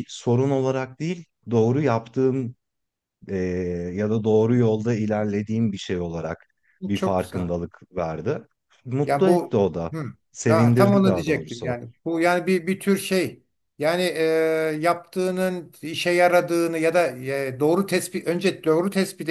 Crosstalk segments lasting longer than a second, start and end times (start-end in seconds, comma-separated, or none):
10.5-11.7